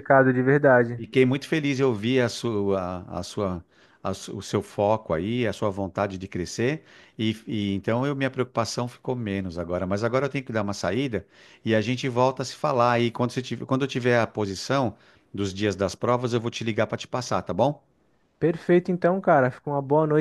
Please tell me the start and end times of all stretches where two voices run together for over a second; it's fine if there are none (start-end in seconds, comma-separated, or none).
none